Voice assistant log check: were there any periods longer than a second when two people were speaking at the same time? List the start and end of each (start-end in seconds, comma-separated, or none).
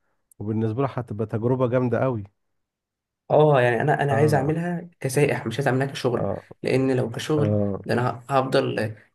none